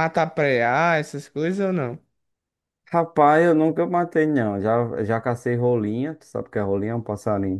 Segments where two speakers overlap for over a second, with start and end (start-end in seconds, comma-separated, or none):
none